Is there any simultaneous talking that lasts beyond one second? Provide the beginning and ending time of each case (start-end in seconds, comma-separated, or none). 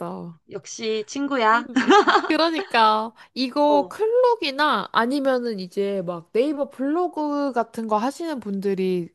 none